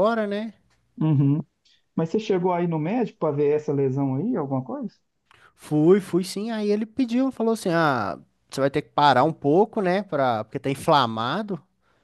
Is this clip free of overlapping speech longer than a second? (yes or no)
yes